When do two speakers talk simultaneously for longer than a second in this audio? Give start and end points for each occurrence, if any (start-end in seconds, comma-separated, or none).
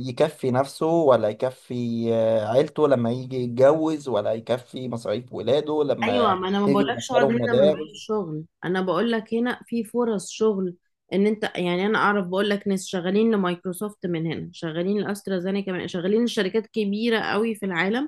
6.0-8.1